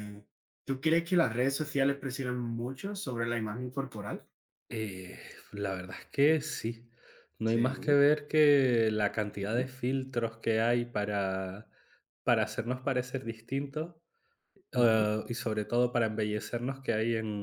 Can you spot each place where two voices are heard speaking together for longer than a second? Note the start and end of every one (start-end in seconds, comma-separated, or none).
none